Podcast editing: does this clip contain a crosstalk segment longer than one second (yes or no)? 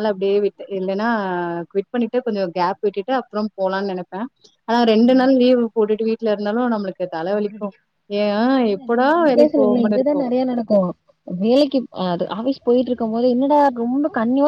no